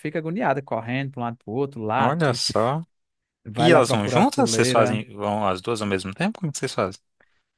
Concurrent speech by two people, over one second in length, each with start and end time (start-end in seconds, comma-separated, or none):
3.6-5.0